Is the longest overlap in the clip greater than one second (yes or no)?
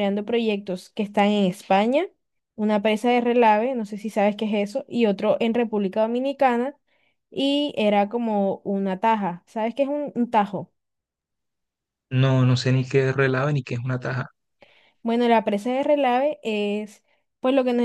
no